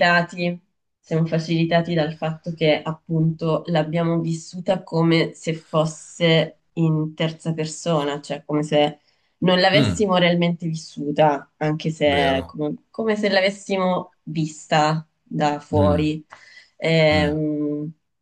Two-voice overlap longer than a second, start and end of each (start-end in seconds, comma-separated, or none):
none